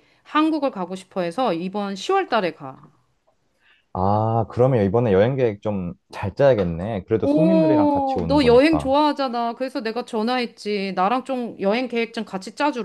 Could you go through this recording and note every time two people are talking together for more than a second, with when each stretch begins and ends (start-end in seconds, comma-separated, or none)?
7.2-8.9